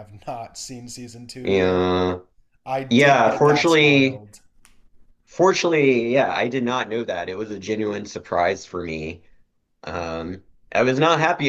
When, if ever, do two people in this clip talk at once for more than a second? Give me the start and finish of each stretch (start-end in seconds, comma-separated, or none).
2.9-4.2